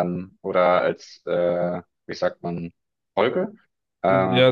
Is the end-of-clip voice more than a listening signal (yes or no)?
yes